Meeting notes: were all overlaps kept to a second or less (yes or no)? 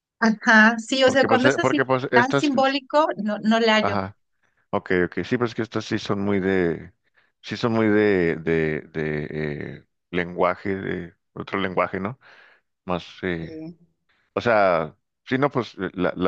no